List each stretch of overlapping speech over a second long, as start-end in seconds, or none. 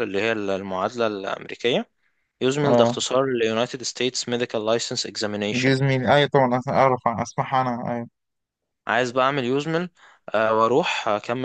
none